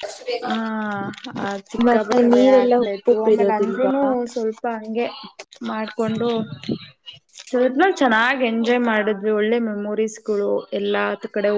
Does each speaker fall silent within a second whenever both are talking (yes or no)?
no